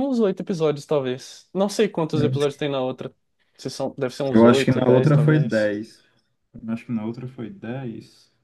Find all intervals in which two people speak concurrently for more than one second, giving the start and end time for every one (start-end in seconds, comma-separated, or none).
4.3-5.7